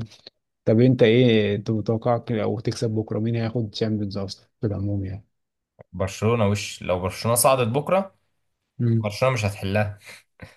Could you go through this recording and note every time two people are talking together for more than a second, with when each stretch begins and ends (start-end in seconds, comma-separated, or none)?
none